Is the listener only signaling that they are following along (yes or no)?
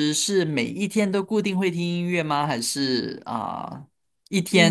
yes